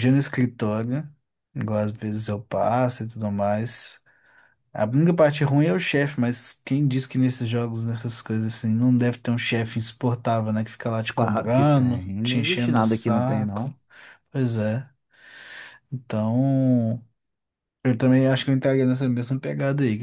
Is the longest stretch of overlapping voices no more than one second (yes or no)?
no